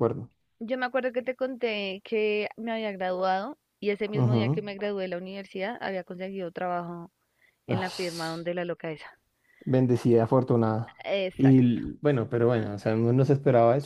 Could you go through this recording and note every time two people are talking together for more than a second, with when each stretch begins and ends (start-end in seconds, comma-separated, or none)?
none